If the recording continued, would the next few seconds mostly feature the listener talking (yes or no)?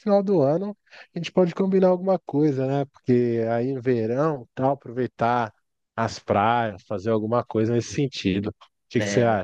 yes